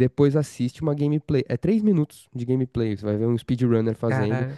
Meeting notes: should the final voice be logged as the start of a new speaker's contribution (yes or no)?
no